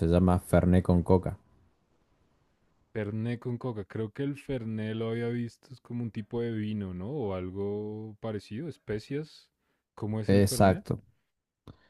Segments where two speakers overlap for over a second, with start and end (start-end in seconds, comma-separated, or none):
none